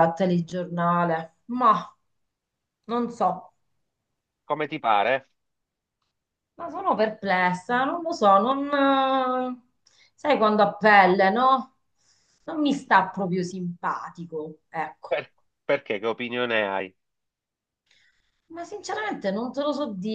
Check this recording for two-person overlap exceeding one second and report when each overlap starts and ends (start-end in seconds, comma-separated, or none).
none